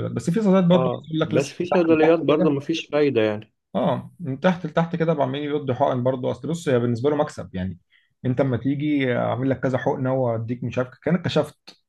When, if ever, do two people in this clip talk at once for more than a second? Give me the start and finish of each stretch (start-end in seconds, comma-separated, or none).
0.7-2.5